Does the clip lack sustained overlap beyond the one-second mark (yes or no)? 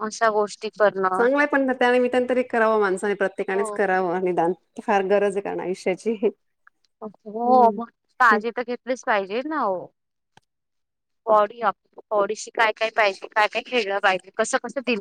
yes